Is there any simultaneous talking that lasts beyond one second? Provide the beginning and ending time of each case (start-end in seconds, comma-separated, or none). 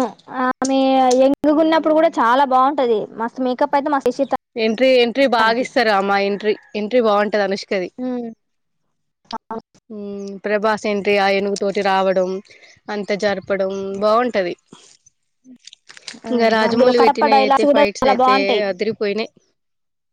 16.7-18.6